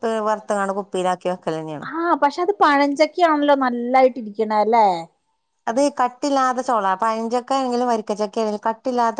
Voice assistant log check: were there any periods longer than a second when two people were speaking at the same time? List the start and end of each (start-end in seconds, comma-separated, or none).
none